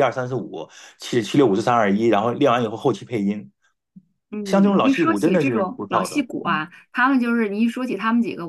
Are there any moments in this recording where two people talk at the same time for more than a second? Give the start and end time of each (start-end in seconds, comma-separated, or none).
4.4-6.6